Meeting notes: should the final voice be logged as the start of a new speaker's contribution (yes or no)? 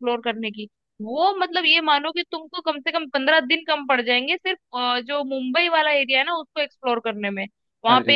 no